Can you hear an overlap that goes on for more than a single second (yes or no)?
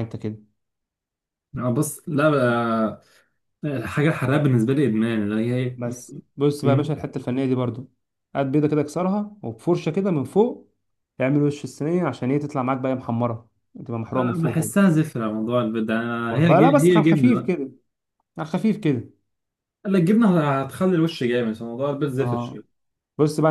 yes